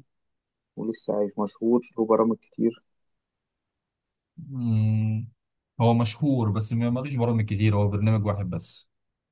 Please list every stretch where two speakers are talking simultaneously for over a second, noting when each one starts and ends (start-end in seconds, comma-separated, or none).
none